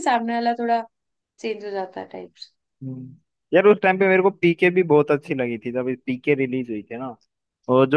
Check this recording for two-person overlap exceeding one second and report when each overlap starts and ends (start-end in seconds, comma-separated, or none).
none